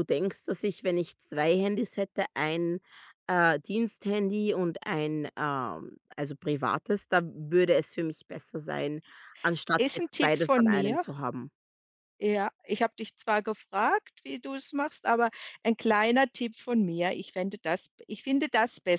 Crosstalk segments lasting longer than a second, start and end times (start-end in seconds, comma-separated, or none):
9.8-11.0